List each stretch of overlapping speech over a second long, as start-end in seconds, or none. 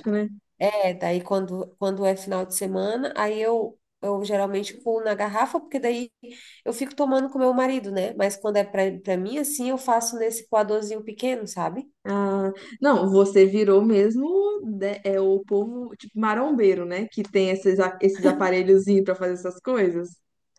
none